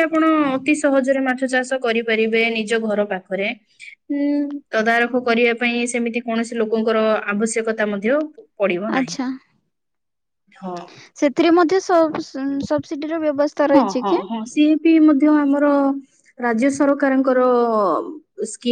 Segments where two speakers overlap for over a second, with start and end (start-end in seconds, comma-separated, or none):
none